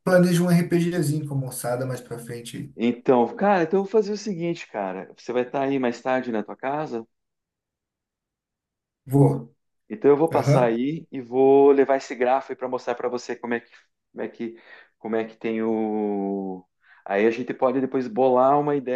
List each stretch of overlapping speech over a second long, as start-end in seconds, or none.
none